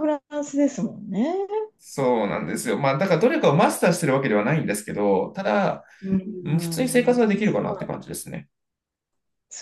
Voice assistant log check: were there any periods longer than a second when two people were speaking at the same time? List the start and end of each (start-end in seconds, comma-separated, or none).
6.4-7.8